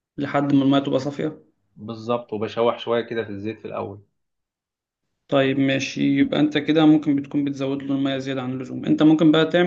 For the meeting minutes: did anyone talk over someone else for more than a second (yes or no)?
no